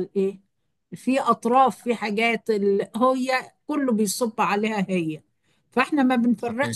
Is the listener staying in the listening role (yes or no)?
yes